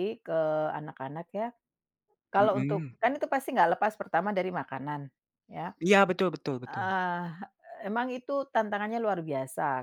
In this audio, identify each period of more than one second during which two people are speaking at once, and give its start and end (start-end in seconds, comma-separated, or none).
none